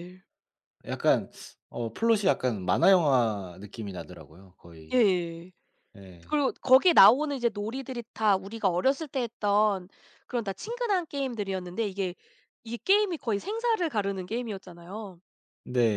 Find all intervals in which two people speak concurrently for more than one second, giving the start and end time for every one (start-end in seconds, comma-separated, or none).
none